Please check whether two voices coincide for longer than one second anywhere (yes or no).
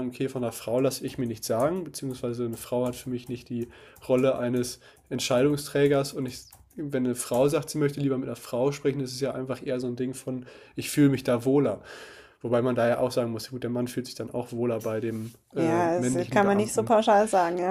yes